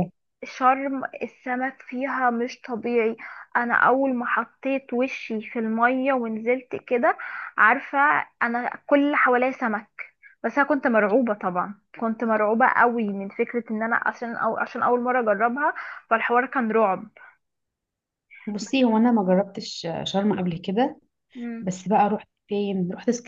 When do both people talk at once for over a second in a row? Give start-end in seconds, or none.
none